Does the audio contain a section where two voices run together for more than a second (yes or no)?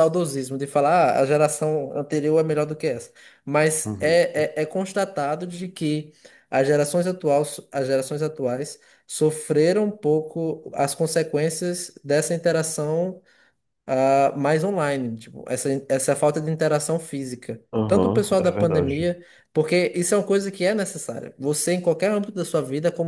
yes